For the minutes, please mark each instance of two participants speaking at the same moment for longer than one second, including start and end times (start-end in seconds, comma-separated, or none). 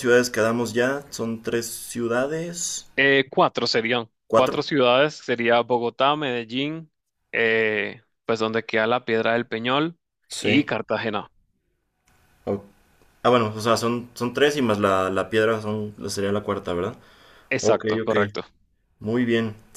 none